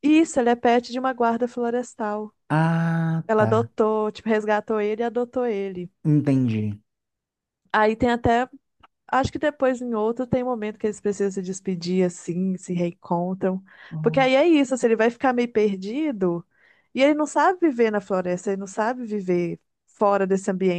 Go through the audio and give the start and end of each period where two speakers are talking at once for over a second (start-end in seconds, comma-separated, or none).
none